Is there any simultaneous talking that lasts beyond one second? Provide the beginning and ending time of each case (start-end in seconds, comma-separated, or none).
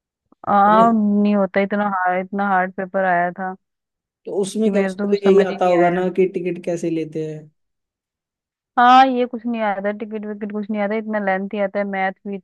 4.6-6.0